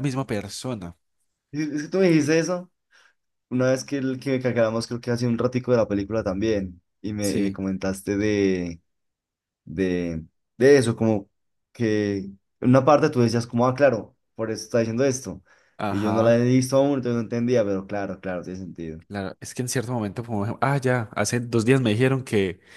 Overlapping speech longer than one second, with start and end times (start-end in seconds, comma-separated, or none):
none